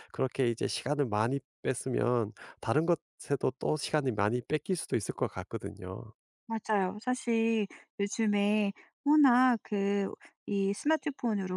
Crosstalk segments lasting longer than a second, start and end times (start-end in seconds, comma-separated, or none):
none